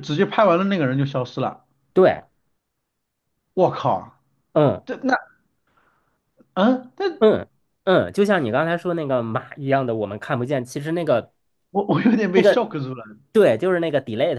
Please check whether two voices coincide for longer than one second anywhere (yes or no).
no